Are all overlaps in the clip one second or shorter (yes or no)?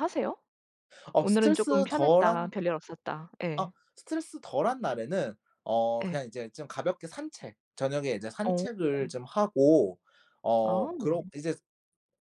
no